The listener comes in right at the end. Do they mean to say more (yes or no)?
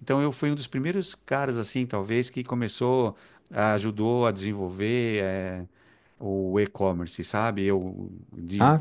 no